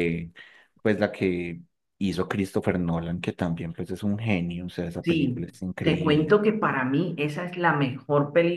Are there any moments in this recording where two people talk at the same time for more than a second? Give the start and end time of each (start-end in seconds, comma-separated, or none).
5.0-6.4